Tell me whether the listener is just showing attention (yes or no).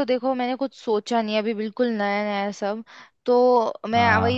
yes